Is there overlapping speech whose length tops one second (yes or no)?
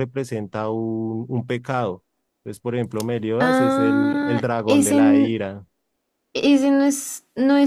yes